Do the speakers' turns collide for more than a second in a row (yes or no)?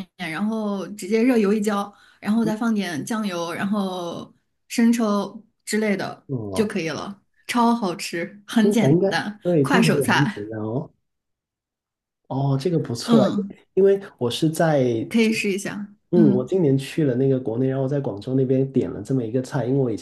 yes